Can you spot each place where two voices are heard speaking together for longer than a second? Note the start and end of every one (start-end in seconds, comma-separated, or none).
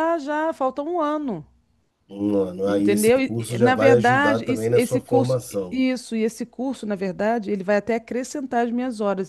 2.6-5.8